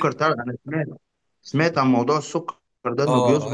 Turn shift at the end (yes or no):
yes